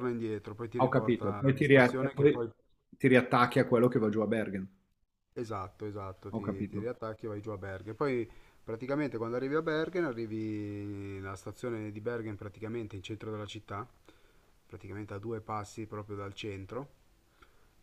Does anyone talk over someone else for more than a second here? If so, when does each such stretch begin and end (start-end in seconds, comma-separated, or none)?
0.8-2.4